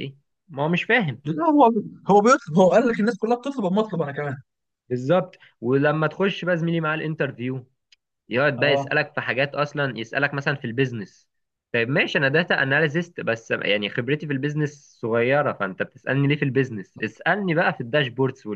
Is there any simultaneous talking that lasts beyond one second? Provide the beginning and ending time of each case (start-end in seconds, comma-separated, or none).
none